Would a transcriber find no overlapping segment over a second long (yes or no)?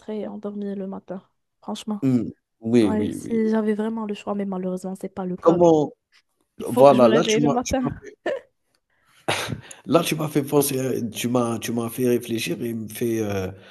no